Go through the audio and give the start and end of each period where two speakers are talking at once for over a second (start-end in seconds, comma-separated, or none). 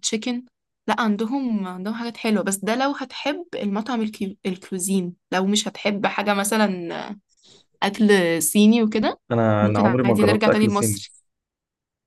9.6-11.0